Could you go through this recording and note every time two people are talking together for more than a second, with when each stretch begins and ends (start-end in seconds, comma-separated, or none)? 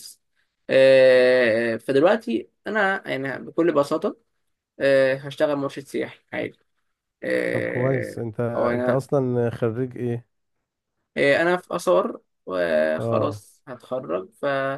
7.5-9.1